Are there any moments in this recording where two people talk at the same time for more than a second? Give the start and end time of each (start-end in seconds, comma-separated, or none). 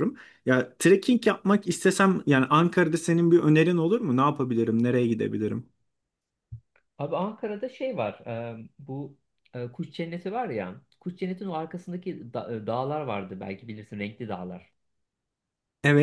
none